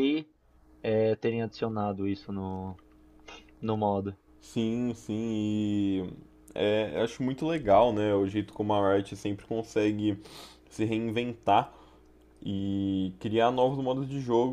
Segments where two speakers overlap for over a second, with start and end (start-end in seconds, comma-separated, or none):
none